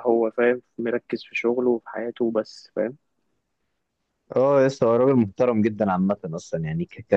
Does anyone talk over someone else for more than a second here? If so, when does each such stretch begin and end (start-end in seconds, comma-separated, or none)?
none